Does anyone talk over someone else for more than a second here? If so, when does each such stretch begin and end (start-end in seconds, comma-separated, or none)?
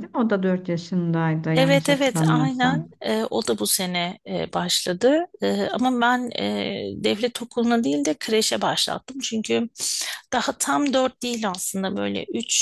1.5-2.9